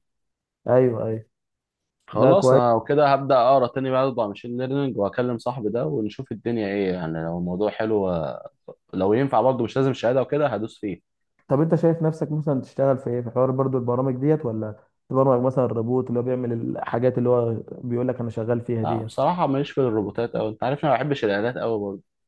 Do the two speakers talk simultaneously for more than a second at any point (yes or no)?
no